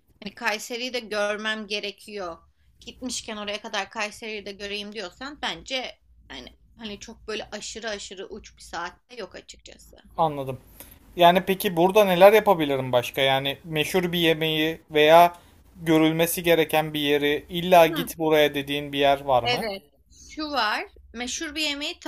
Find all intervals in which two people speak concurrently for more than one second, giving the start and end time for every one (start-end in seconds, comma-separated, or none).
none